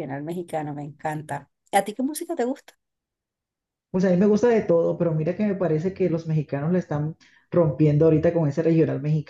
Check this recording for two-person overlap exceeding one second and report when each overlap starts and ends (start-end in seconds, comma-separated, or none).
none